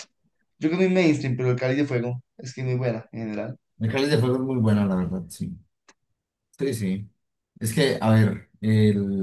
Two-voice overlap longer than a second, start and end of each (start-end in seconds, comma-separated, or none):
none